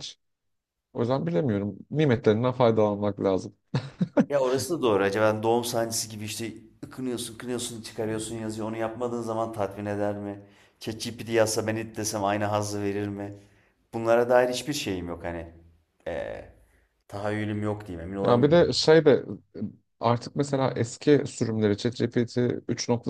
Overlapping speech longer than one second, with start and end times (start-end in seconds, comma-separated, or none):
none